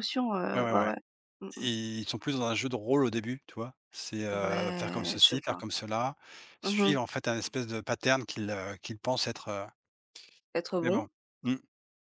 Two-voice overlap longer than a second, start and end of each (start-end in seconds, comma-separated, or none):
4.3-5.6